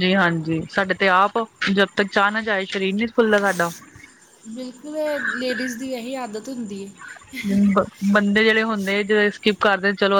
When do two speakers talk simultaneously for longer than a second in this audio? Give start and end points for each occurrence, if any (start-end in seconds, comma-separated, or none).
none